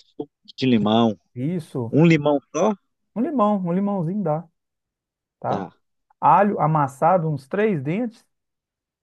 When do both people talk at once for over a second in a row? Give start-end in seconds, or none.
none